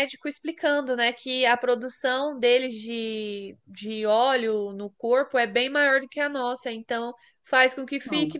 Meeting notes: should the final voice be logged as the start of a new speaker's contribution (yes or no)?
no